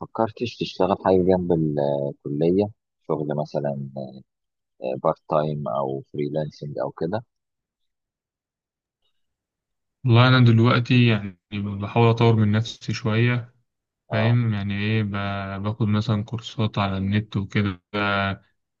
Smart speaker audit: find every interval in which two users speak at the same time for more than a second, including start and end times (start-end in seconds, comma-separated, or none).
none